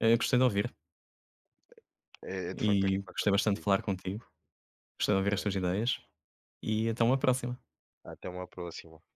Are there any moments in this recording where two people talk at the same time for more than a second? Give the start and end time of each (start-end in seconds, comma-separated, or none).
2.5-3.8